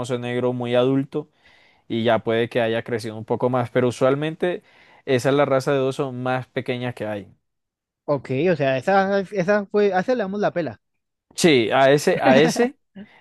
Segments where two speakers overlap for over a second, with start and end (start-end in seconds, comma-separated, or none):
none